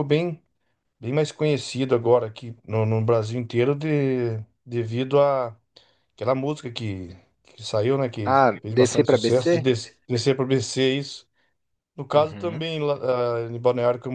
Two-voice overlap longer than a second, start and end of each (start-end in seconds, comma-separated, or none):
8.2-9.7